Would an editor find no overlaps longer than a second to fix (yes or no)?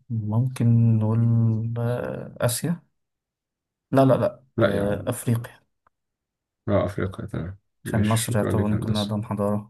no